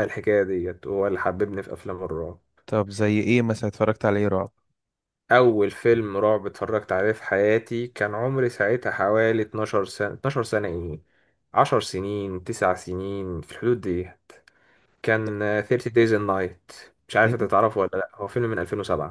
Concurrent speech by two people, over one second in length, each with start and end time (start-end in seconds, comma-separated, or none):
none